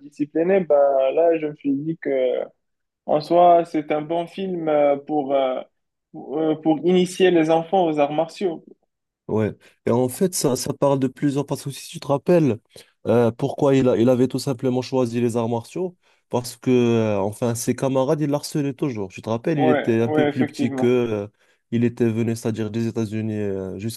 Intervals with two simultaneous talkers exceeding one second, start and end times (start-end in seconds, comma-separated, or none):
19.5-21.0